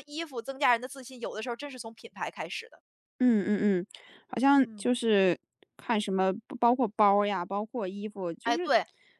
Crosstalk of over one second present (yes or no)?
no